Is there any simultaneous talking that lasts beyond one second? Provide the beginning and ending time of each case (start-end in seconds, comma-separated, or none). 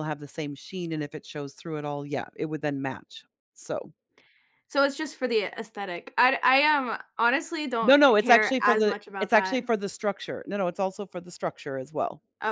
7.8-9.6